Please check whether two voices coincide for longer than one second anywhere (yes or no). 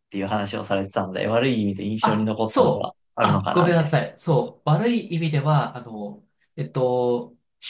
yes